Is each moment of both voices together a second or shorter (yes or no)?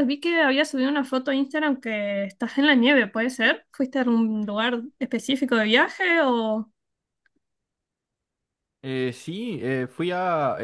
yes